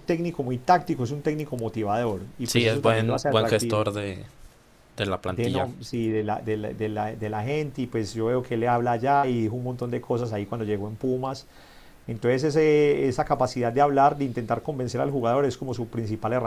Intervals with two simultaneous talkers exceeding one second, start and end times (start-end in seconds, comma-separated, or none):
2.4-3.8